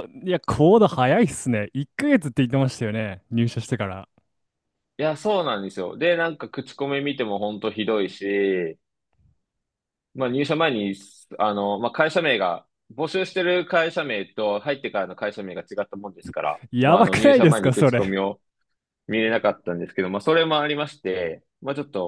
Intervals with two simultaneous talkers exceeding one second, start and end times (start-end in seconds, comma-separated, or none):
16.7-18.1